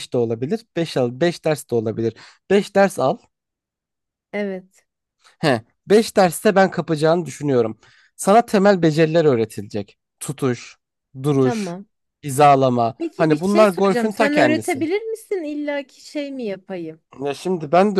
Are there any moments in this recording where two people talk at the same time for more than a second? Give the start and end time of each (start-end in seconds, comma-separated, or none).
13.0-14.9